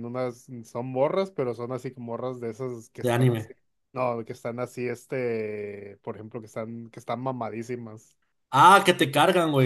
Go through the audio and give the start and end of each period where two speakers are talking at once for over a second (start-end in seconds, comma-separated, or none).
none